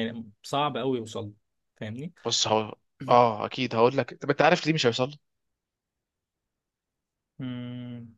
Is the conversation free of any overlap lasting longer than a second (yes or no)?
yes